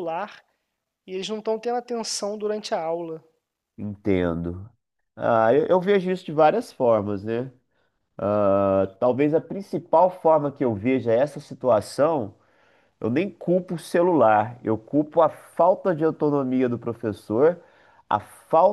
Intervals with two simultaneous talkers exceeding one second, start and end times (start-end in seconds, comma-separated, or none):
none